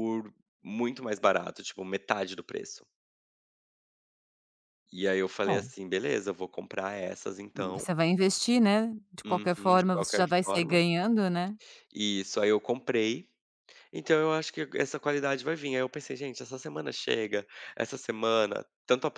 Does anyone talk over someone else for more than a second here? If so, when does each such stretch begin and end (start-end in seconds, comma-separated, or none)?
9.2-10.8